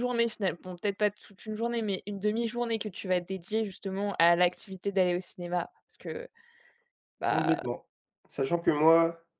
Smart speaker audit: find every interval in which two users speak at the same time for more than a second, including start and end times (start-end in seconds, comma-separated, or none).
none